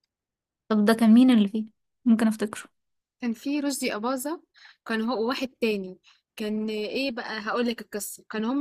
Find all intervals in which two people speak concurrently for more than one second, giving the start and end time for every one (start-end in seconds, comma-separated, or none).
none